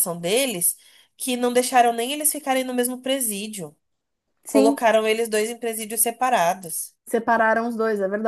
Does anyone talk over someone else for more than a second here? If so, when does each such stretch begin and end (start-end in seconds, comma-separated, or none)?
none